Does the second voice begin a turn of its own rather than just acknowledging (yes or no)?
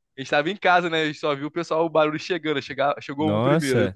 yes